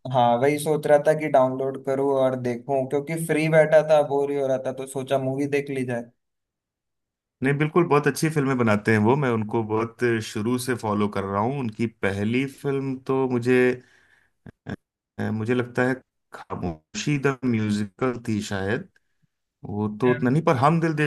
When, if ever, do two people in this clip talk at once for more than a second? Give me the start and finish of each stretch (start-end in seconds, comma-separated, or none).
none